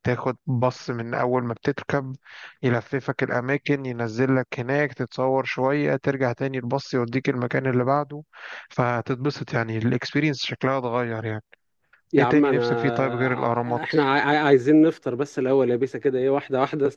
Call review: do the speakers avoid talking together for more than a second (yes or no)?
no